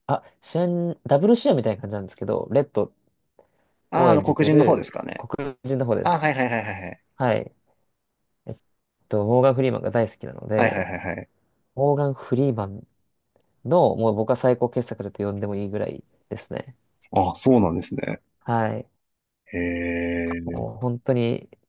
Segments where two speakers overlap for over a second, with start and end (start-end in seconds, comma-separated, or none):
3.9-5.3